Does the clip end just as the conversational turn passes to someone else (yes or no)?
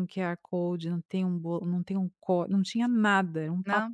no